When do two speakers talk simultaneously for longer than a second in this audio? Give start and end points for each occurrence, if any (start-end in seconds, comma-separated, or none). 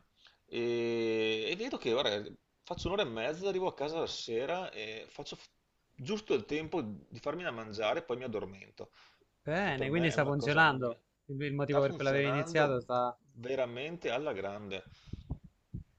9.6-10.9, 11.6-12.9